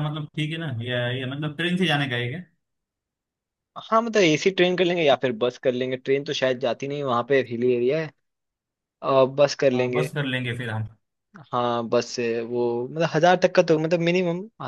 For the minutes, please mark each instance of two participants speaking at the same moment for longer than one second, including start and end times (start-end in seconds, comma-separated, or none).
none